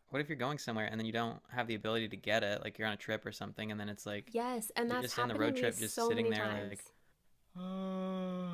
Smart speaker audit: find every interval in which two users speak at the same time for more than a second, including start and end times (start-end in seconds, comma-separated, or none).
4.8-6.8